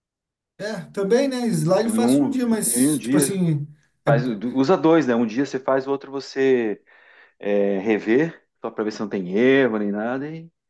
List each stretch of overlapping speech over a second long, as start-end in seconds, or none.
1.8-3.4